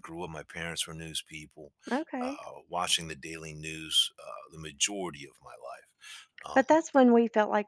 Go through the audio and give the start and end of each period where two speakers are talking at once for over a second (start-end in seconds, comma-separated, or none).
none